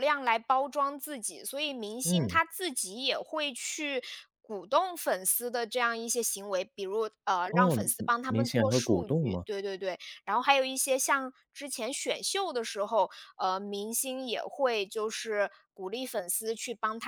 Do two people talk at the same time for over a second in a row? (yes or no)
yes